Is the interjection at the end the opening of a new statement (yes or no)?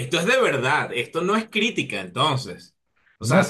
yes